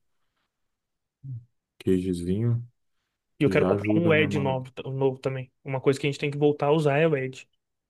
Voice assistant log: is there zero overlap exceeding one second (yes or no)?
no